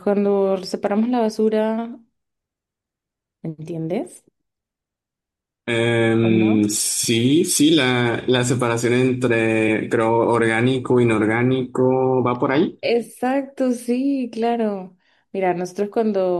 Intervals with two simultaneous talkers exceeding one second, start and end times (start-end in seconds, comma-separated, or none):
none